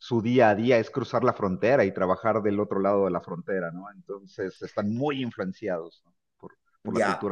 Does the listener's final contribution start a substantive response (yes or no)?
yes